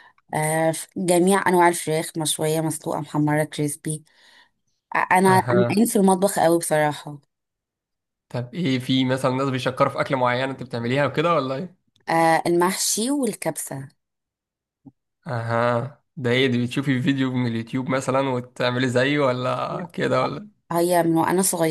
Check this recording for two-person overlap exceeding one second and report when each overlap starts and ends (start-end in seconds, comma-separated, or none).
none